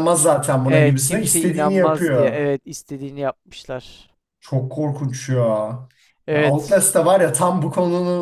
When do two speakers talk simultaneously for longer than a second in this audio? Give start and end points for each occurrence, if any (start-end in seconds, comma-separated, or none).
0.7-2.4